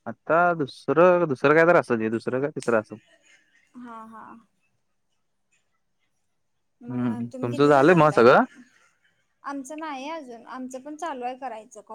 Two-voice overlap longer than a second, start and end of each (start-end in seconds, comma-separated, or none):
6.9-8.2